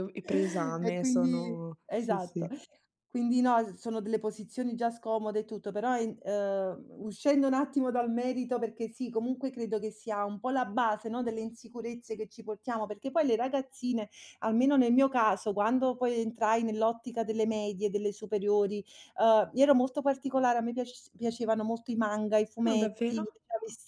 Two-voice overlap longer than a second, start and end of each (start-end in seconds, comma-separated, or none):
0.8-2.5